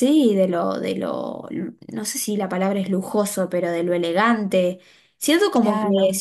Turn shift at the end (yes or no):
no